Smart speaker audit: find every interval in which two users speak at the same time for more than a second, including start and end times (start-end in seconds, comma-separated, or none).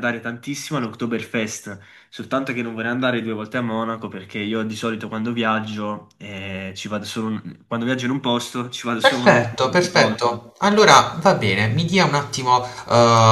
9.0-10.4